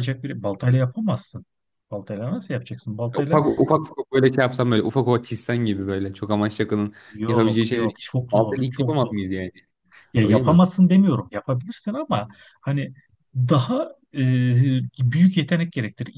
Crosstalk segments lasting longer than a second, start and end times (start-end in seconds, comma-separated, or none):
7.1-9.2